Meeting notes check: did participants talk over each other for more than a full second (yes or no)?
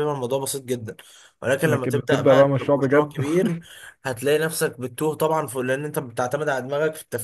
yes